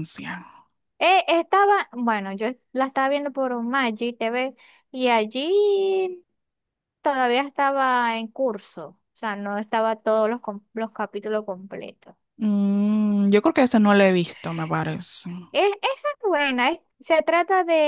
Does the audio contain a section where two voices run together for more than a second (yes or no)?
no